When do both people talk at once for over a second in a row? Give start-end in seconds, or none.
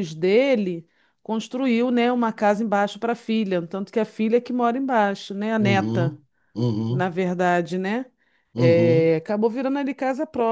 none